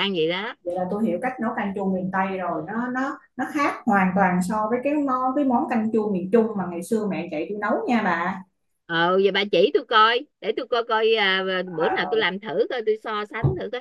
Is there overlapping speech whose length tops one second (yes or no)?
no